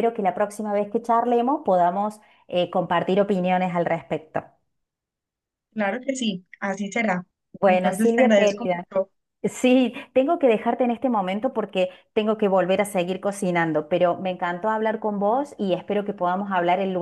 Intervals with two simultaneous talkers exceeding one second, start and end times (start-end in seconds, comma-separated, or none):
7.6-8.8